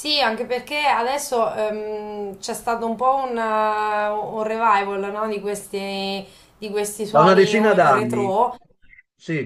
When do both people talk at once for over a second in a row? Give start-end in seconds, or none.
7.1-8.3